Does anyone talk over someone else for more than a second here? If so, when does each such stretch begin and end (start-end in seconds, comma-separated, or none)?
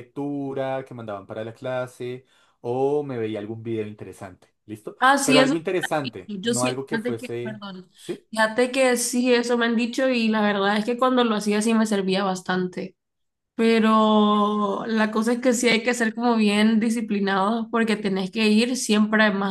5.0-7.9